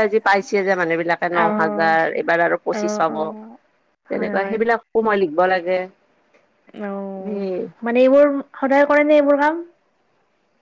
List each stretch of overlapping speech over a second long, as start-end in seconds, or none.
none